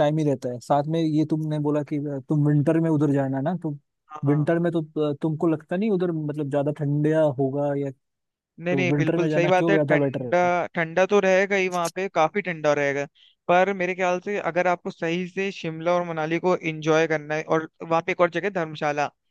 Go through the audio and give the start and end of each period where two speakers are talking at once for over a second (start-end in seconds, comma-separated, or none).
8.7-10.4